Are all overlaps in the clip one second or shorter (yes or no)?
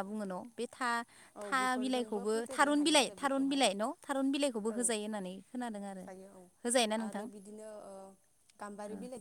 no